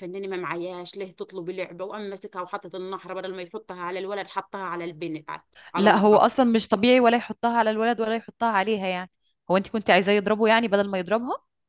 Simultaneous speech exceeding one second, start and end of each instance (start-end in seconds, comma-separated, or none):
none